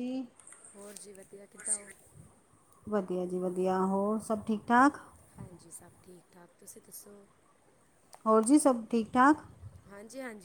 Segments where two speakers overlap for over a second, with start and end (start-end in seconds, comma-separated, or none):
none